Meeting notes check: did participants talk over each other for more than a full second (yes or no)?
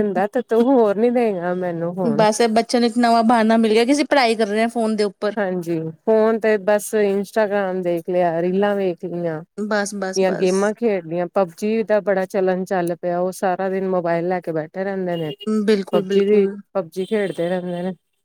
no